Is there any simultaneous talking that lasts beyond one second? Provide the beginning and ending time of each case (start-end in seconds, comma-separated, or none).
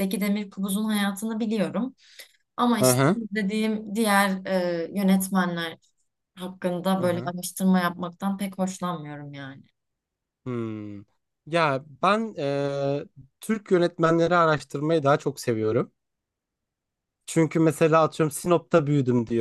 none